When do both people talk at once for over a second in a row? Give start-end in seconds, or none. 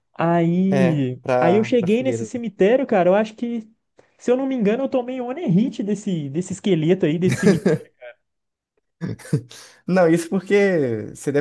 0.7-2.3